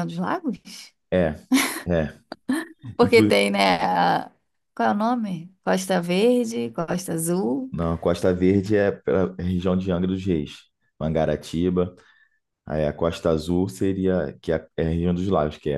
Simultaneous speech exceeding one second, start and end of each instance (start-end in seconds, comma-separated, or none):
none